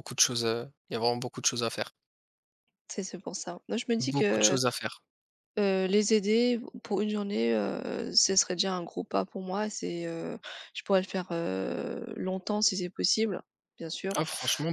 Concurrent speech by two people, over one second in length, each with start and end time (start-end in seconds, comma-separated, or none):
none